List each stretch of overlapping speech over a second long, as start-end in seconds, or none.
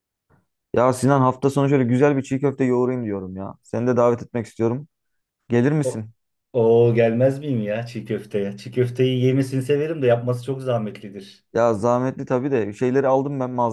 none